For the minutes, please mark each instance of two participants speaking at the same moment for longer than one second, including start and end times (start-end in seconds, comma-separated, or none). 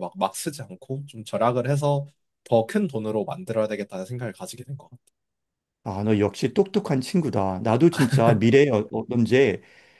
none